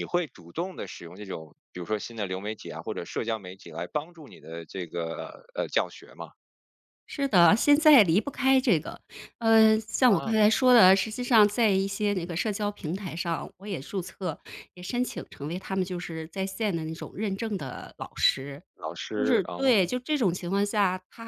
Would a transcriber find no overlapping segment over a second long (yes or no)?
yes